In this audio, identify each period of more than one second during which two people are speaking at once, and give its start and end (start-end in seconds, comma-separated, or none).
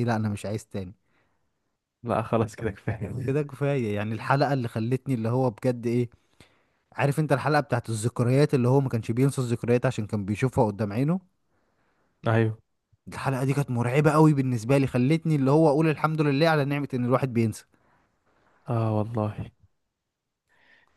none